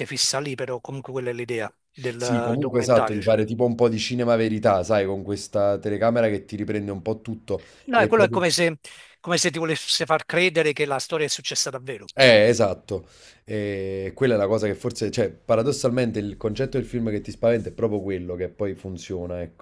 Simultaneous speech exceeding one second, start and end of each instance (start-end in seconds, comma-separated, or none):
2.2-3.4